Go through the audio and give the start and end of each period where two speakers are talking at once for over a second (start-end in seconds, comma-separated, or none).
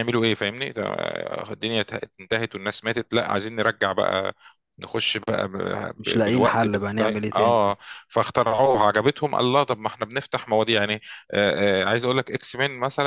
6.0-7.7